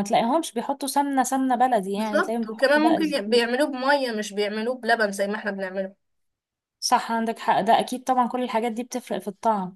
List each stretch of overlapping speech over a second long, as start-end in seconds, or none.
2.0-3.4